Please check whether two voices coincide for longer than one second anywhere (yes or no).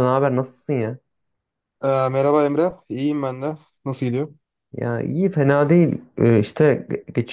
no